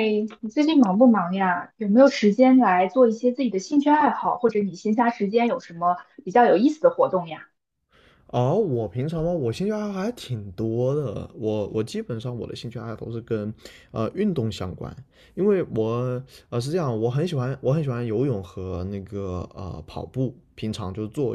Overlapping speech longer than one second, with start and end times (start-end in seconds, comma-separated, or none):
none